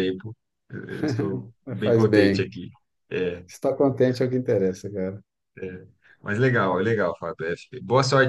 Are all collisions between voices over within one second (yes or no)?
yes